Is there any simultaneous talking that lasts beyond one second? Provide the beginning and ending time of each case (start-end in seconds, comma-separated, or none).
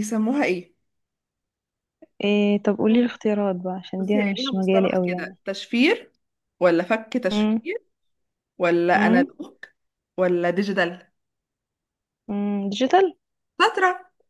4.0-5.3